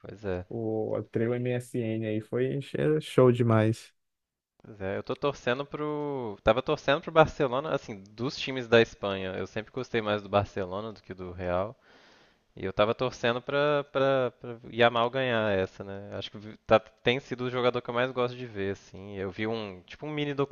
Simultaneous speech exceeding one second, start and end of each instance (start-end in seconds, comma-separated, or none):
none